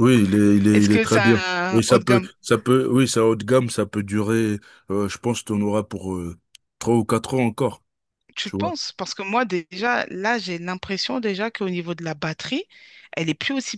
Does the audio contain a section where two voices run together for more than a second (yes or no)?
yes